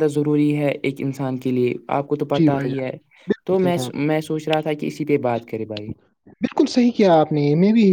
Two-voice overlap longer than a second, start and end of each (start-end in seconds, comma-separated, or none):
none